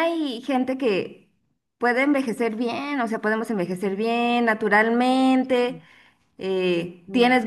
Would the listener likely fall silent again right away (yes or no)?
yes